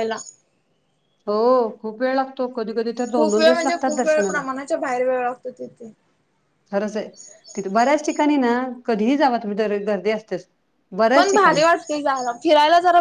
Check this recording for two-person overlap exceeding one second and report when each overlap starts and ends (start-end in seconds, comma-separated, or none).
3.1-4.4